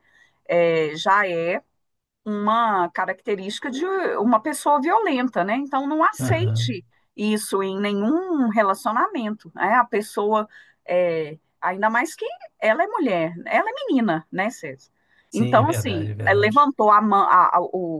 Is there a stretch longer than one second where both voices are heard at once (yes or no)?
yes